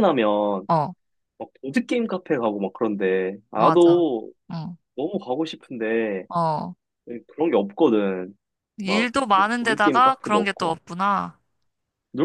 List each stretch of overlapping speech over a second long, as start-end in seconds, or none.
8.8-10.8